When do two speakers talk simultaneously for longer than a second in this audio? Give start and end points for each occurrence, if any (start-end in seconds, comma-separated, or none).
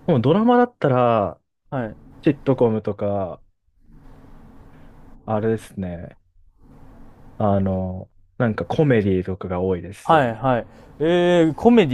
none